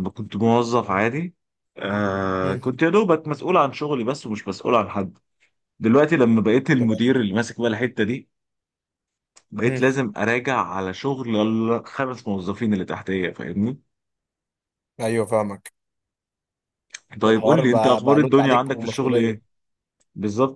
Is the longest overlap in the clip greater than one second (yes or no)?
yes